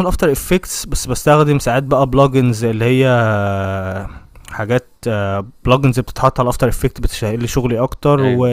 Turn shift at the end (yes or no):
no